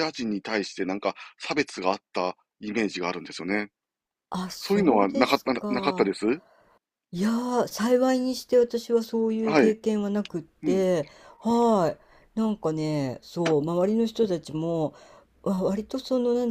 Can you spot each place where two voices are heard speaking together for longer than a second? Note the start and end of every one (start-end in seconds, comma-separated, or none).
4.6-6.1